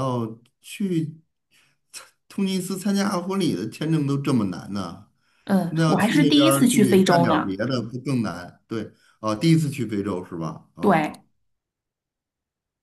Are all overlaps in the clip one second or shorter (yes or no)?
no